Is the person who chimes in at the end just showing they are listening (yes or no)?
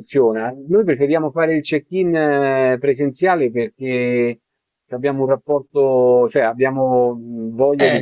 no